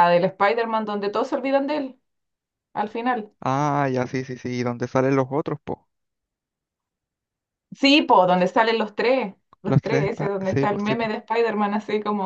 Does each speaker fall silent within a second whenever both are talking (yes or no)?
no